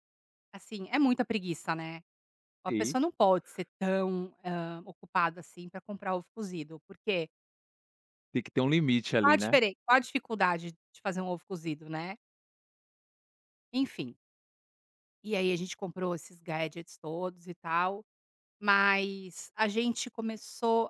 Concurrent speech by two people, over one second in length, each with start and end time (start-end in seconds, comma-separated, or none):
none